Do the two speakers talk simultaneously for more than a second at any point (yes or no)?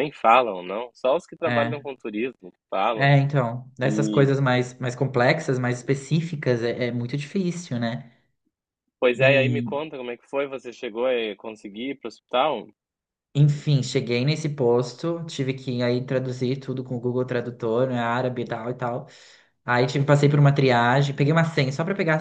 no